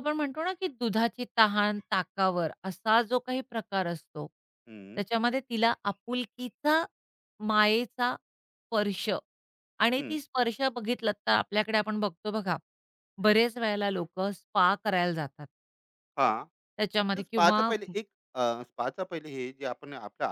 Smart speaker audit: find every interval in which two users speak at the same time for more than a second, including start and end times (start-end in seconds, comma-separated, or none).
none